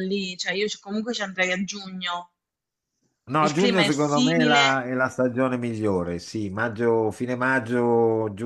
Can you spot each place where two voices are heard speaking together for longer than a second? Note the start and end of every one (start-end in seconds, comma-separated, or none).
3.4-4.9